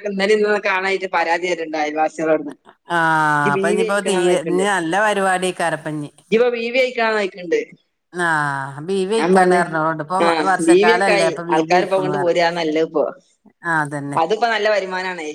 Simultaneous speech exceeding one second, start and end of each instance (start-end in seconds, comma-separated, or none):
10.5-12.2